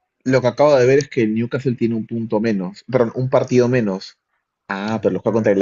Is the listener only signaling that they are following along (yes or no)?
yes